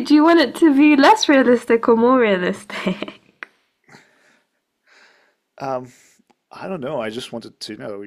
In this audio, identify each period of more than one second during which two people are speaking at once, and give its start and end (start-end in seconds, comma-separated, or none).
none